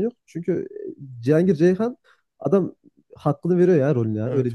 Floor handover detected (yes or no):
yes